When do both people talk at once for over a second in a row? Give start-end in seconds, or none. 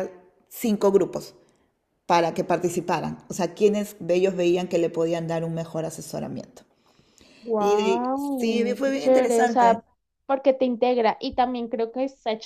7.6-9.8